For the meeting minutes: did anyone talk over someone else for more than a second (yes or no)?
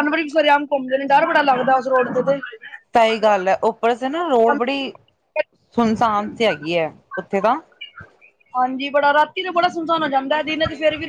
no